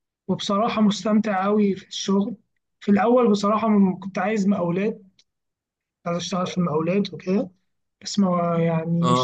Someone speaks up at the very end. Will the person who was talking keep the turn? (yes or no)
yes